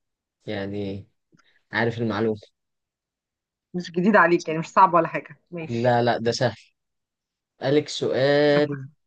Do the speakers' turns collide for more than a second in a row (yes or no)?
no